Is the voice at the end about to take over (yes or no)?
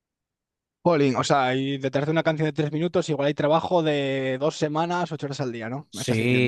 yes